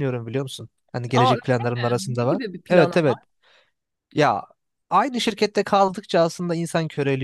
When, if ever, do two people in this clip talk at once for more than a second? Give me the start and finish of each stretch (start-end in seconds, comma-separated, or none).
1.1-3.0